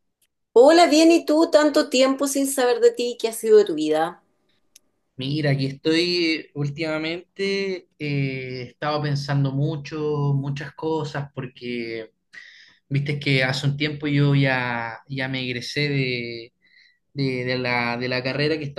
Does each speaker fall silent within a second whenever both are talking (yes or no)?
yes